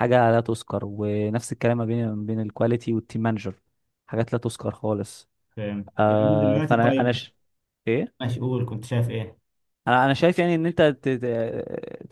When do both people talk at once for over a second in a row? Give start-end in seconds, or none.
6.0-7.2